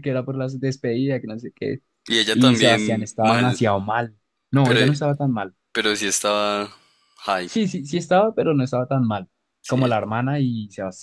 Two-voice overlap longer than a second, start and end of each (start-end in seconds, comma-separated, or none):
2.3-3.6